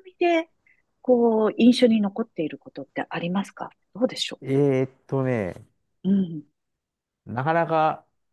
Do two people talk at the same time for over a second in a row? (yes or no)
no